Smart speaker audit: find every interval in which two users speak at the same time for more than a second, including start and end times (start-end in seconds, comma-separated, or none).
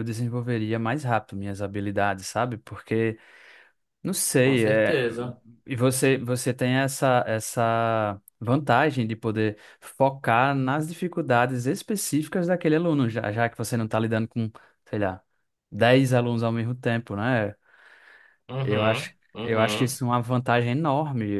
18.6-20.0